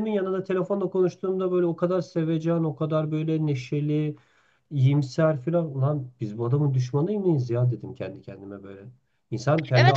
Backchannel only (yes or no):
no